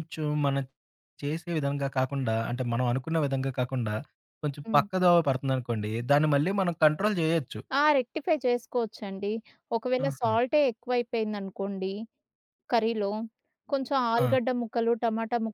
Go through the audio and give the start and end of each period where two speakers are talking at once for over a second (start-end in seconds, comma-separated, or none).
none